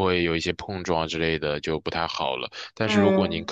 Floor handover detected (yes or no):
no